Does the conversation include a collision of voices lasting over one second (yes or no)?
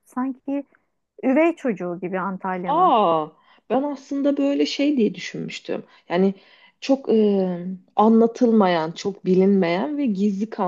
no